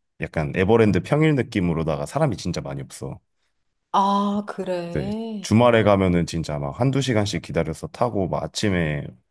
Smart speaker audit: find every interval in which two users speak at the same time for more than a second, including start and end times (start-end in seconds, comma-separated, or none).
none